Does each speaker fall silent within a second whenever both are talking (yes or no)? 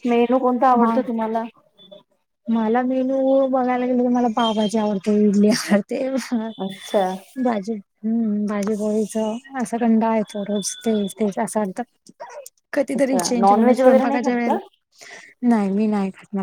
no